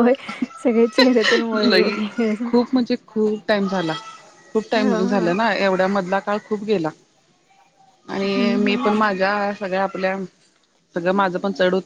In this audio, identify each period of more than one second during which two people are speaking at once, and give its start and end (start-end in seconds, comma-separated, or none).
none